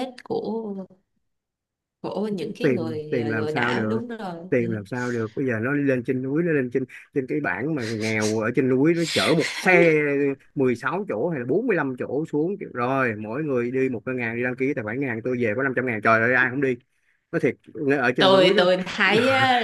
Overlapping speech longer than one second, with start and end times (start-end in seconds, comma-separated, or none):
2.6-4.0